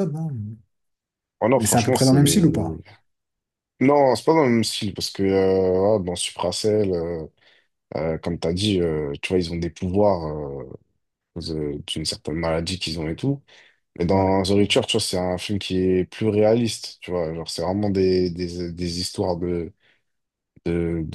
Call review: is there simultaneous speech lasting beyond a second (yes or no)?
yes